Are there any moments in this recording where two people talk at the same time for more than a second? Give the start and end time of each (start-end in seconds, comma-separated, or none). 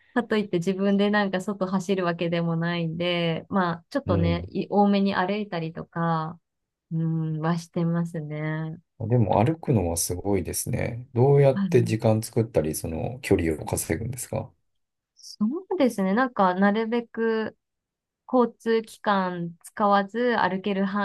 none